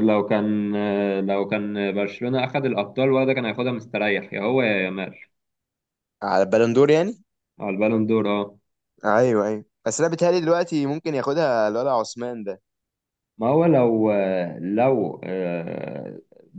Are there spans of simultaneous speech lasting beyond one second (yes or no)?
no